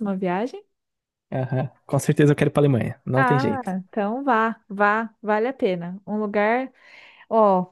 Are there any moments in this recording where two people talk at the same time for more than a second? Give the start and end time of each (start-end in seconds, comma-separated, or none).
none